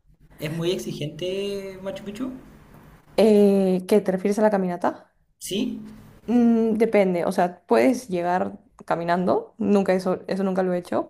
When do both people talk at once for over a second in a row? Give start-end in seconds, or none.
none